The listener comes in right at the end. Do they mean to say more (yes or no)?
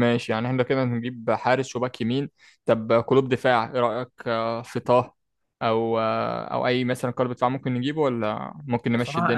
yes